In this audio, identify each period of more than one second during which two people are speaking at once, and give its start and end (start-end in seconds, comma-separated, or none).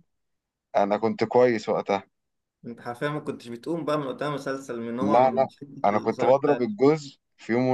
5.0-6.8